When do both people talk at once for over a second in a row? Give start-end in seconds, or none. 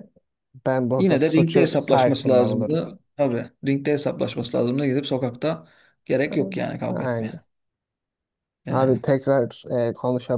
1.0-2.8